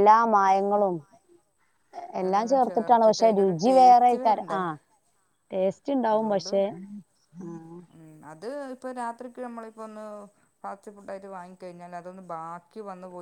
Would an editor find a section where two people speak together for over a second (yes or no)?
yes